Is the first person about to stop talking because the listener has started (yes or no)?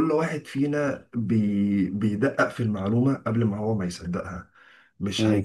no